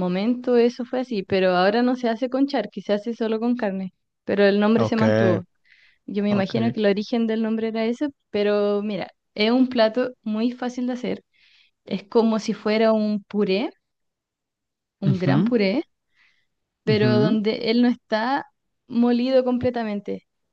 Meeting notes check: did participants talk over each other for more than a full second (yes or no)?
no